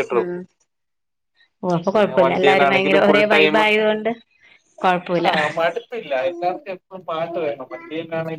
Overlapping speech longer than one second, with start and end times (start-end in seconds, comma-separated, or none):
1.9-3.6